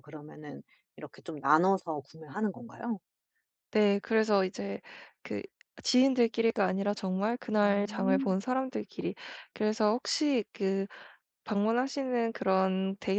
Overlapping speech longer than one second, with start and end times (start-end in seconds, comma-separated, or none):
none